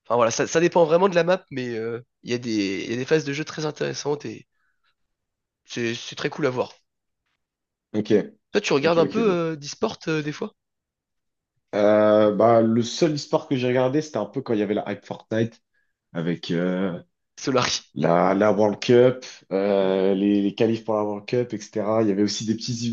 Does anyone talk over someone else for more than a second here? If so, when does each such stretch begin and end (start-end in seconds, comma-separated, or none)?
none